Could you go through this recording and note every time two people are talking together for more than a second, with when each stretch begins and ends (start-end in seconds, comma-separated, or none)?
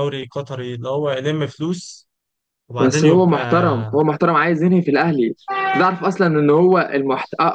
none